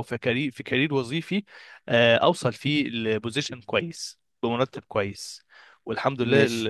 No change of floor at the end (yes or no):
yes